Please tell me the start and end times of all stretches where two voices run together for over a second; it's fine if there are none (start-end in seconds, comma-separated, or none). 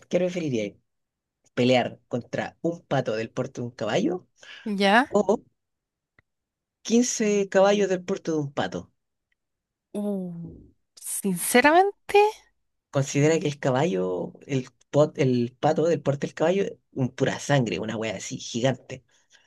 none